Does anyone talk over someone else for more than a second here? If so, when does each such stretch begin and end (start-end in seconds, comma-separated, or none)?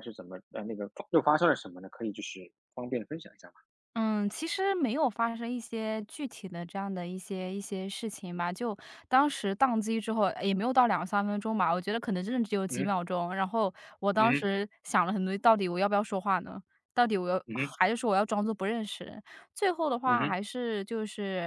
none